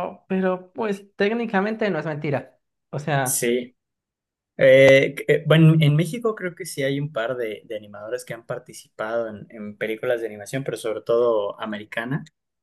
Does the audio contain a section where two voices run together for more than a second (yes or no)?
no